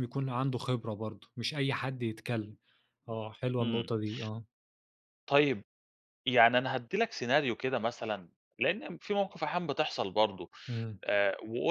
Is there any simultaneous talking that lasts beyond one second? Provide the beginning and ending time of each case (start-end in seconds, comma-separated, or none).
none